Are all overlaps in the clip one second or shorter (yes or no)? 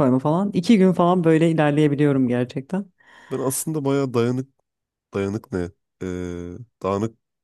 yes